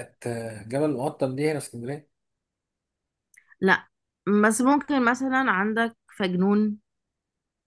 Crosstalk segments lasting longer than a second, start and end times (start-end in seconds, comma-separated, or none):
none